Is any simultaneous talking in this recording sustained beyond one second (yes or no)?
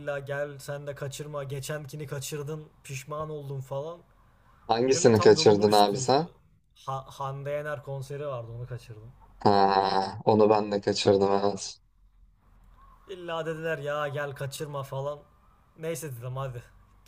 yes